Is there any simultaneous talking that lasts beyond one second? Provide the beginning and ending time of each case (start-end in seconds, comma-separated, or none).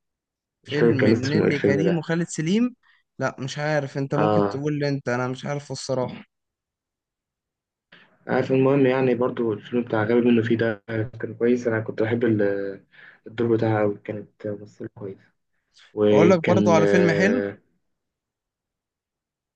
0.7-2.0, 16.1-17.4